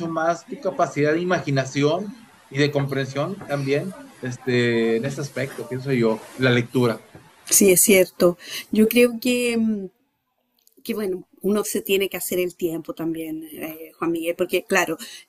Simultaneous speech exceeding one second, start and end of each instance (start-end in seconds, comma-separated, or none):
none